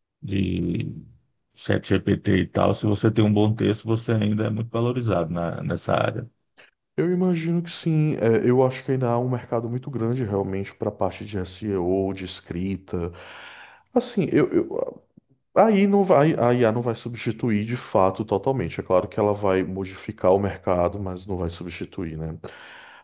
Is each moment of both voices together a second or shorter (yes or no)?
yes